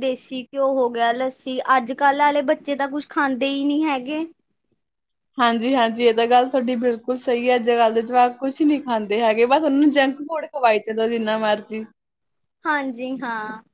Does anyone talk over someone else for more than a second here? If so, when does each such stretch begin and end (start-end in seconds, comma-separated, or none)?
none